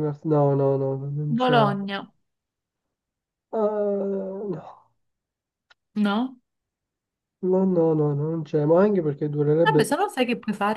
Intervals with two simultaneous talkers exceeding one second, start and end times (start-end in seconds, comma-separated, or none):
none